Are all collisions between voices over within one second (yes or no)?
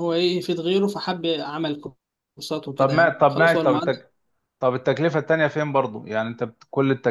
no